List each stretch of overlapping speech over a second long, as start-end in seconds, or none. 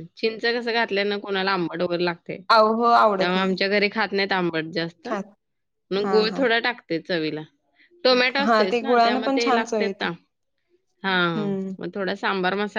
8.4-9.9